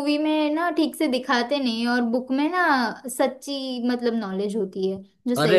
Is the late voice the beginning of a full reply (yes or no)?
yes